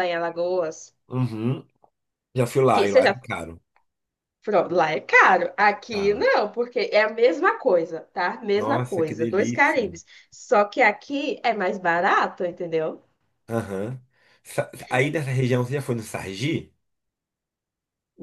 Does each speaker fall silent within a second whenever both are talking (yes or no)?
no